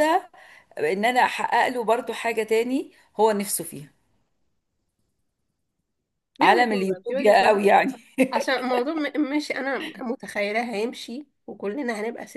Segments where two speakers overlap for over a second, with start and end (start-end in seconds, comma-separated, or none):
6.4-7.6